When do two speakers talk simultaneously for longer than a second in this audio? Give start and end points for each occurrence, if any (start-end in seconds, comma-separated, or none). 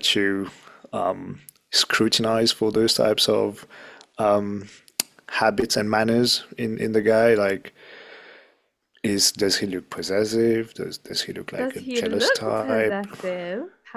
11.6-13.1